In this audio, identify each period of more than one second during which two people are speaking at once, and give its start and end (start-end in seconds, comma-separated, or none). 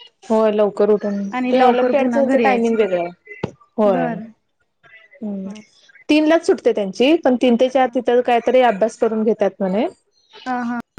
1.4-2.9